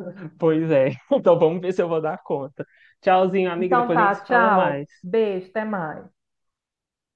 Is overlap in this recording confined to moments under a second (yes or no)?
no